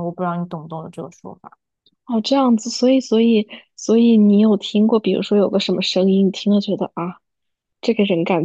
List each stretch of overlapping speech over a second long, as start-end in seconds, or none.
none